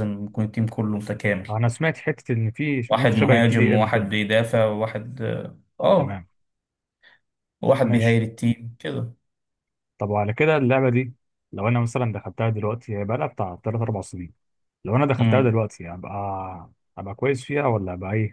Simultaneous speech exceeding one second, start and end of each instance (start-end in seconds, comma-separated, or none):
2.9-4.1